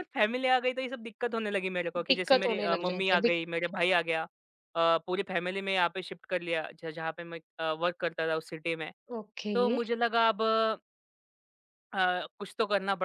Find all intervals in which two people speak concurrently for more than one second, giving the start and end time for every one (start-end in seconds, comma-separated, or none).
2.1-3.4